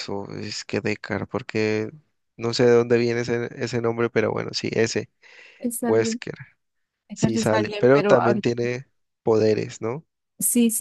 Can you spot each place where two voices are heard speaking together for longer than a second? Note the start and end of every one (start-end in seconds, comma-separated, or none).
7.1-8.5